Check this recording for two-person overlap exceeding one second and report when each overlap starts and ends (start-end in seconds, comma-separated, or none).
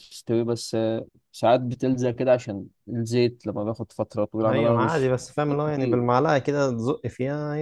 4.5-6.0